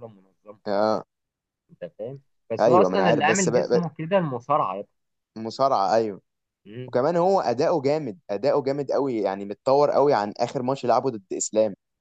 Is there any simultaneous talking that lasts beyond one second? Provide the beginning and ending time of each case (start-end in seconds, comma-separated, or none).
2.6-3.8